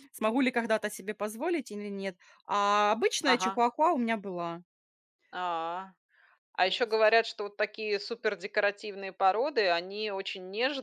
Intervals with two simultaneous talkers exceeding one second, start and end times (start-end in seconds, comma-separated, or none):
none